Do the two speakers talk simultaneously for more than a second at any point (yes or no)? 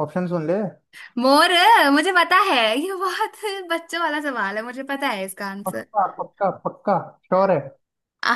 no